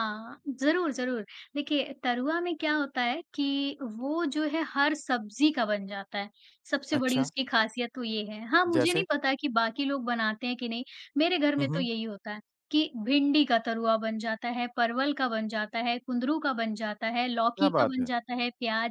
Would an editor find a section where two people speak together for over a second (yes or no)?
no